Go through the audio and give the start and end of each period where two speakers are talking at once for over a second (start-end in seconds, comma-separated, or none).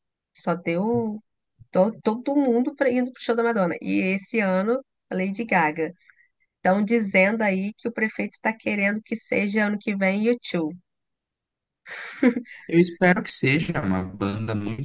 none